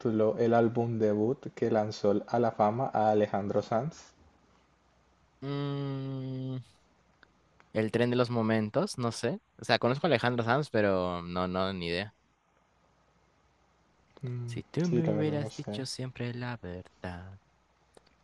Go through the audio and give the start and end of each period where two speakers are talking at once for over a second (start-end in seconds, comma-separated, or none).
14.4-15.8